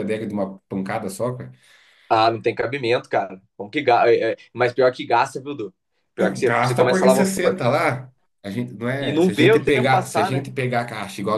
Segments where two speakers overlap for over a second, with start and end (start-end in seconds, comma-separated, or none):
6.2-7.6, 9.0-10.5